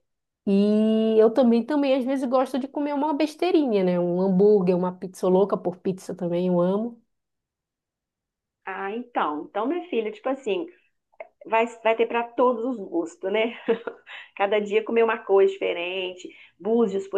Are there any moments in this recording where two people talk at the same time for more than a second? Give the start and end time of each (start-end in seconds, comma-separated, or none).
none